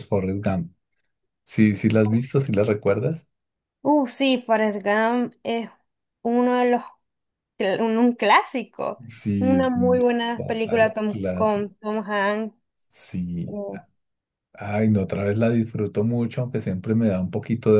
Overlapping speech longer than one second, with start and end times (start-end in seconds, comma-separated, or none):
9.4-11.7